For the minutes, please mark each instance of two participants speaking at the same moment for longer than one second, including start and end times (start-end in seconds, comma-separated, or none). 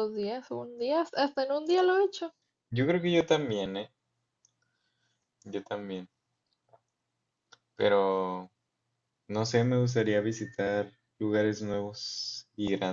none